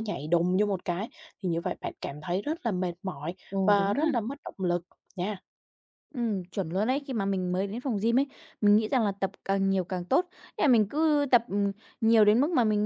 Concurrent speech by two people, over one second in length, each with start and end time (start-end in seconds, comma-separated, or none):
none